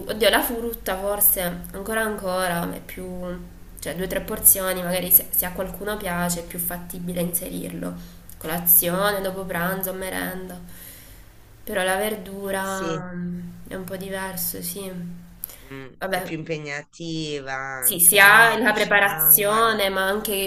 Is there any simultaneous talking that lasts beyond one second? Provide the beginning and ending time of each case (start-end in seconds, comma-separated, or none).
17.8-19.8